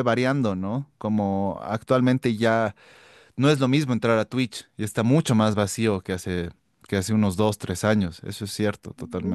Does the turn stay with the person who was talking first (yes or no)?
no